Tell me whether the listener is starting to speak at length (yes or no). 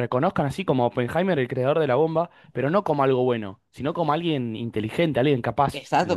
yes